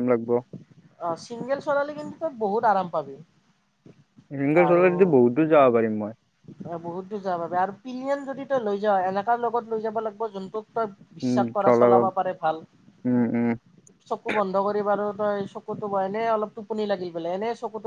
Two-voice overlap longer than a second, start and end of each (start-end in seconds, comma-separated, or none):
none